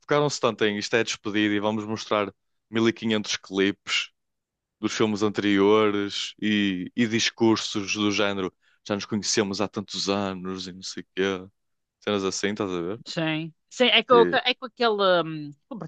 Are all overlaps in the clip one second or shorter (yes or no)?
yes